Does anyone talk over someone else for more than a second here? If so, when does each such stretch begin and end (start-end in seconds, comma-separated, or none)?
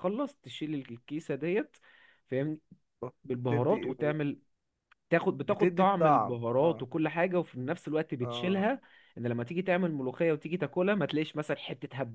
5.5-6.8